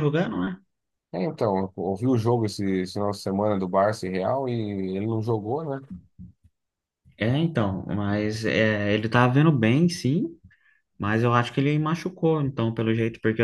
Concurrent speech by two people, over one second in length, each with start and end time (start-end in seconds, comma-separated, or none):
none